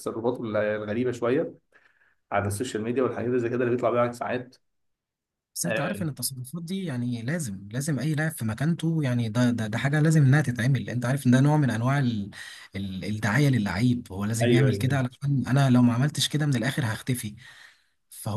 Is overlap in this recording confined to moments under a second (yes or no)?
yes